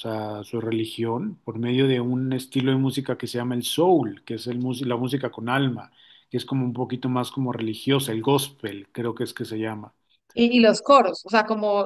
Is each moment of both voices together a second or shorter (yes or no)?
yes